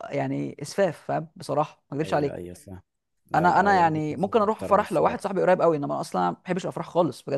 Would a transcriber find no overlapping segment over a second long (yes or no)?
no